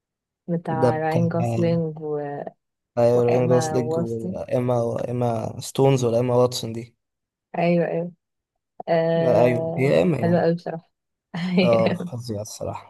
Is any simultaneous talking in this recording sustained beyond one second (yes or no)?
yes